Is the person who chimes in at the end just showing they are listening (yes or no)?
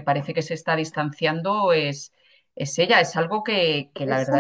no